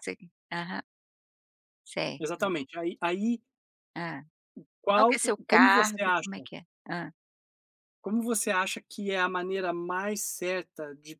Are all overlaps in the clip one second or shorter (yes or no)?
no